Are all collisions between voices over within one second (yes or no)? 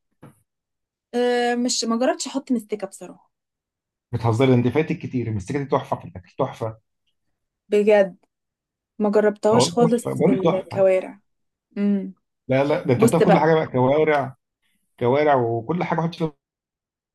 no